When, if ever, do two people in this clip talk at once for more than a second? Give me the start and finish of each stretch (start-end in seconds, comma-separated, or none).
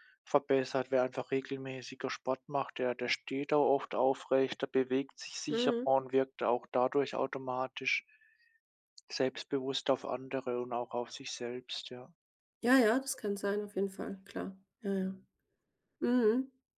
none